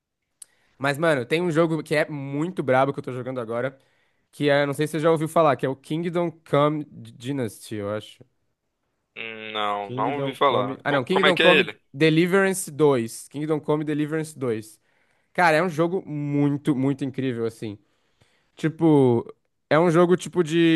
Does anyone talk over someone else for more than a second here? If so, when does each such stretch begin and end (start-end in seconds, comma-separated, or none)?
9.8-11.8